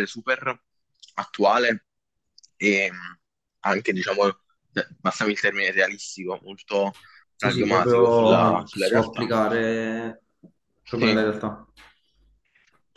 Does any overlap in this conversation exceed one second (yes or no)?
yes